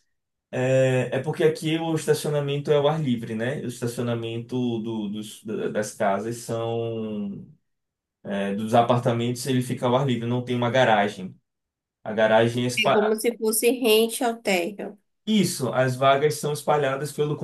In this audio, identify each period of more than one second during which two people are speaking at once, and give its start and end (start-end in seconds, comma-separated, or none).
none